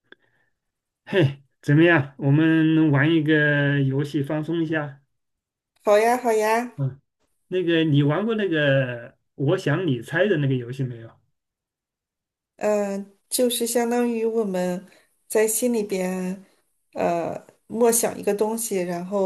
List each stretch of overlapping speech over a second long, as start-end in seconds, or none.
none